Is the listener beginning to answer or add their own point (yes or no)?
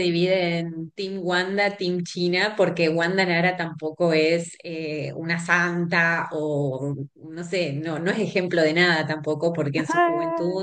no